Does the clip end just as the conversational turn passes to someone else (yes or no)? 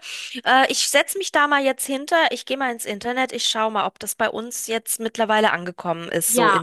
yes